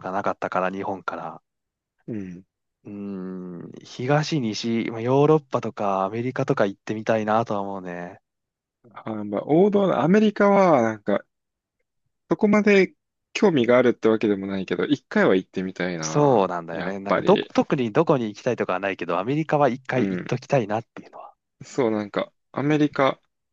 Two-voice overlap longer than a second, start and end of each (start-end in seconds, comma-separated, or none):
16.0-17.5